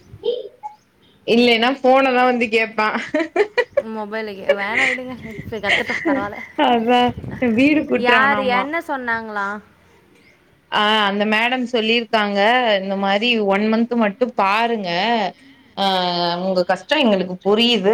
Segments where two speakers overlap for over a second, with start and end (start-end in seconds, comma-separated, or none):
none